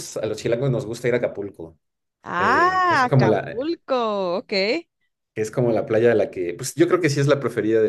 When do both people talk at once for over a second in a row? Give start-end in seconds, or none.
2.4-3.6